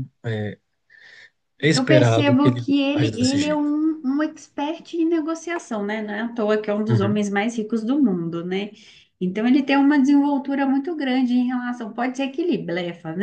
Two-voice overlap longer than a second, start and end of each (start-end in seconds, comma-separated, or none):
1.7-3.7